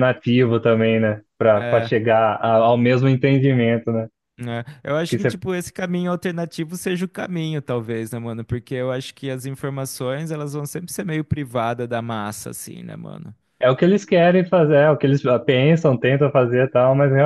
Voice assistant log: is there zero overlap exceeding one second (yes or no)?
yes